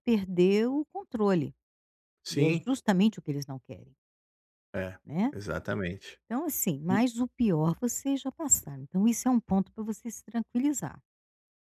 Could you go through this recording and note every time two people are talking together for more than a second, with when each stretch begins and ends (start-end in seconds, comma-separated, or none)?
none